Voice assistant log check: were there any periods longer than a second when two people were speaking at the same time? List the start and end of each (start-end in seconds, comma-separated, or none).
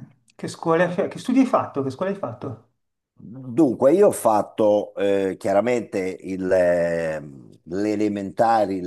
none